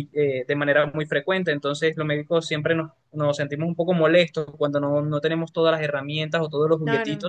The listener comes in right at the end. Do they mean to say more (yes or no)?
no